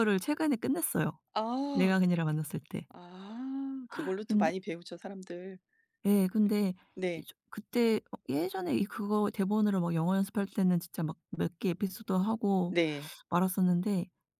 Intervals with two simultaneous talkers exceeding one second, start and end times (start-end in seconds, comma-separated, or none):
none